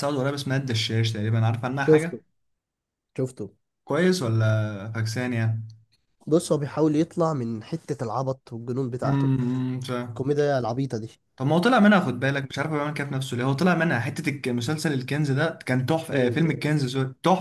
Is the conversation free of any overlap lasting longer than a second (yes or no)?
yes